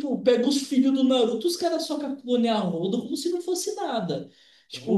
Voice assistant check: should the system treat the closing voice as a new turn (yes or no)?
yes